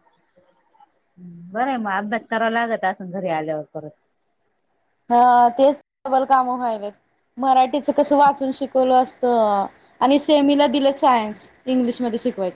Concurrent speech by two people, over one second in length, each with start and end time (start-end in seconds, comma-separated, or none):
none